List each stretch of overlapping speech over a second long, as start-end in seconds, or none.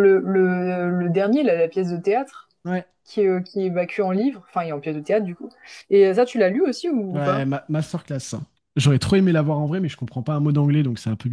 none